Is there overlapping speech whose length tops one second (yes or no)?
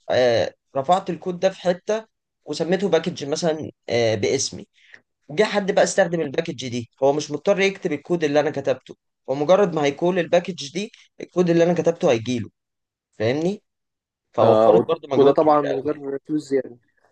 yes